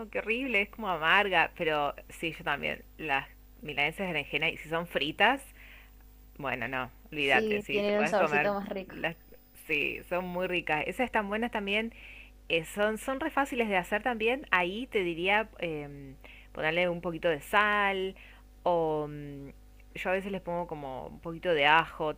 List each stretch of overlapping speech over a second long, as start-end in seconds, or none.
7.2-8.5